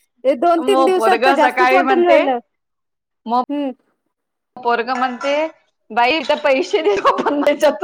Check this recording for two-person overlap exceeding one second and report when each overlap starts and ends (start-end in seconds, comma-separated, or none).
0.6-2.2